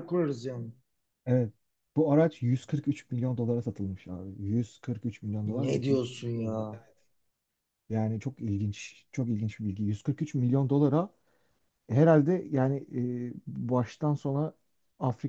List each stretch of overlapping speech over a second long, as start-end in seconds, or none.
5.4-6.8